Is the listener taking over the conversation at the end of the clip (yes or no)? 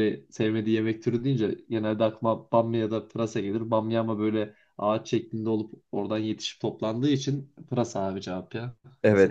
yes